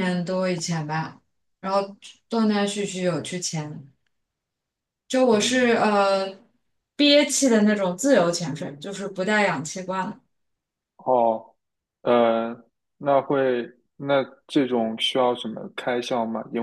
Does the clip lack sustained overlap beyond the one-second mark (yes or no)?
yes